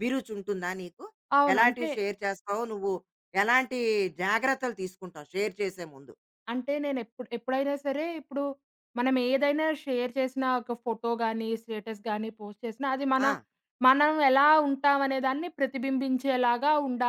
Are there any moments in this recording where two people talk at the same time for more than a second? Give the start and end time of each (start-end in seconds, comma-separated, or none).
none